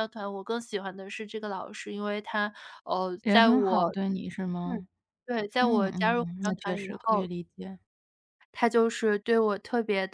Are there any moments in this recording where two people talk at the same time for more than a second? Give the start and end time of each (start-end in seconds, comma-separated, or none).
5.6-7.3